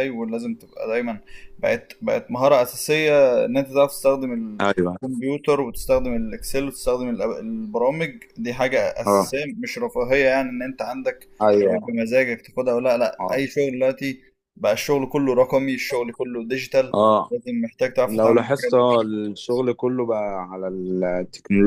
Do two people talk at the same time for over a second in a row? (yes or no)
yes